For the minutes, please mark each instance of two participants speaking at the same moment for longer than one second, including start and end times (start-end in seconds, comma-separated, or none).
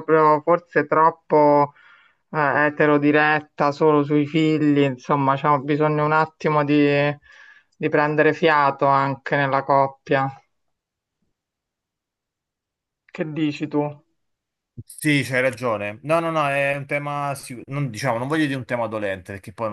none